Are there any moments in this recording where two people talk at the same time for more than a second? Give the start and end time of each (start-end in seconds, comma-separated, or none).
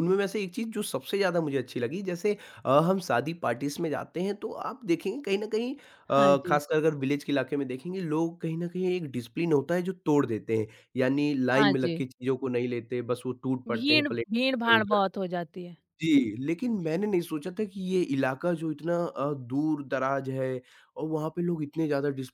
13.7-15.0